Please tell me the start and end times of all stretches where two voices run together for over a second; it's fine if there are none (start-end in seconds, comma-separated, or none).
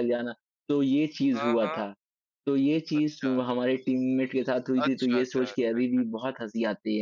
4.8-6.0